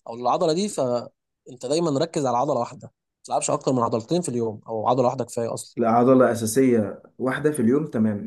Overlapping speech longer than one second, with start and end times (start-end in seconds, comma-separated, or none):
none